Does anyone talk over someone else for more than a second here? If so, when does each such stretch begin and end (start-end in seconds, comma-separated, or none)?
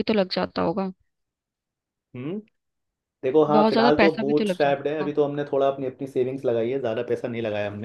3.5-5.1